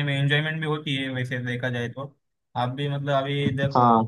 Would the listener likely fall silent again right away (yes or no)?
yes